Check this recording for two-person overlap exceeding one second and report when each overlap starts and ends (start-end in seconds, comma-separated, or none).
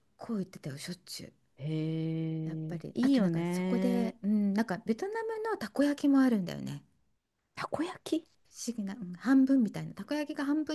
2.5-4.2